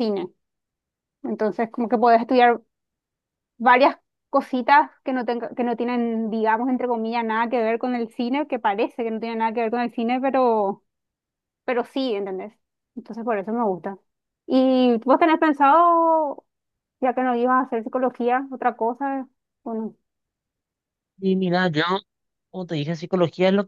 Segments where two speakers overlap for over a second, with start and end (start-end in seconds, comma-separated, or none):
none